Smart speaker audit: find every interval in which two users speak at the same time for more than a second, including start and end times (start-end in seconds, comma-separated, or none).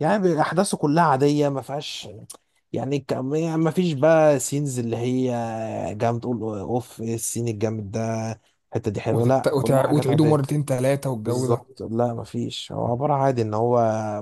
9.1-10.4